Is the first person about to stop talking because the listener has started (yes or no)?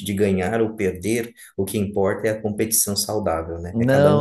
yes